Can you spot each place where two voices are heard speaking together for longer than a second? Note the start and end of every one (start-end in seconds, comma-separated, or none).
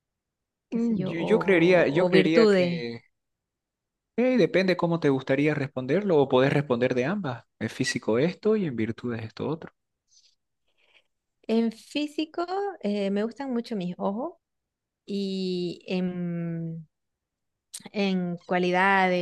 0.7-2.9